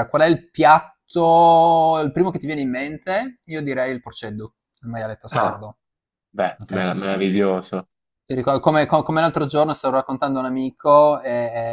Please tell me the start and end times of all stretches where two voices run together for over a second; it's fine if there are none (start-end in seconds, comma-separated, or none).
none